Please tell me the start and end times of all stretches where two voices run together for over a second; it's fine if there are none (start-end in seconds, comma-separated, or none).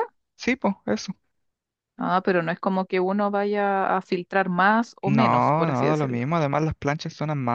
5.0-6.3